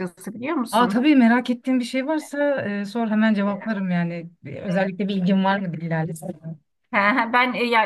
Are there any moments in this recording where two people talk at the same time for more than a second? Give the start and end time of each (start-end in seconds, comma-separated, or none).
none